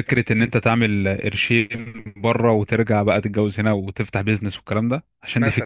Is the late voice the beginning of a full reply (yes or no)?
no